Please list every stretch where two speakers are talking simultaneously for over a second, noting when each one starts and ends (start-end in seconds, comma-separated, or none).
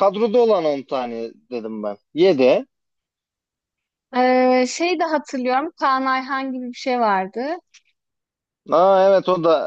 none